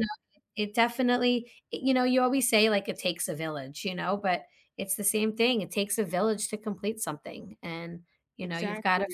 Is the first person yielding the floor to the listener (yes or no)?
no